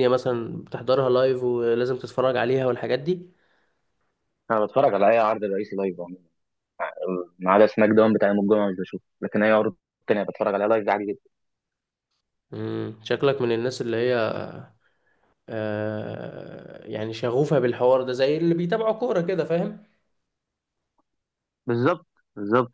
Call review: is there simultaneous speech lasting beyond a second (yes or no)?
no